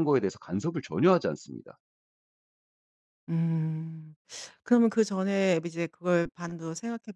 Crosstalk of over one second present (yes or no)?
no